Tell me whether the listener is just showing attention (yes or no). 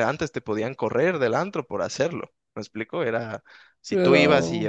yes